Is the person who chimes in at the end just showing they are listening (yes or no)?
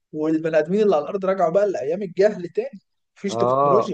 no